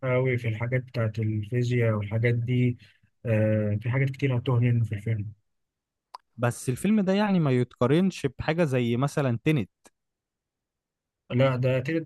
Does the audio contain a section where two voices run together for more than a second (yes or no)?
no